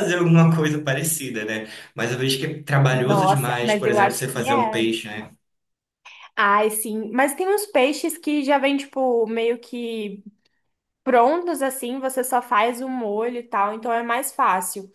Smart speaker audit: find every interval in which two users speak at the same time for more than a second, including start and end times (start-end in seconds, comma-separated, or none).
2.9-4.8